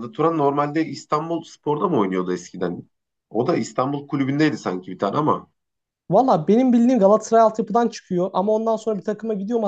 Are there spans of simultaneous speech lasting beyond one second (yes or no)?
no